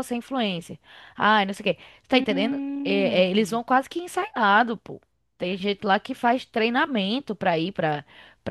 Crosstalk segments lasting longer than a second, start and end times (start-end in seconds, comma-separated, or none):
2.1-3.6